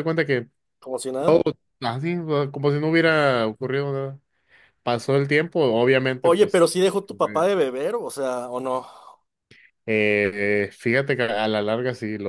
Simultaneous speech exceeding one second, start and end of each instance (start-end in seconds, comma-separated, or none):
none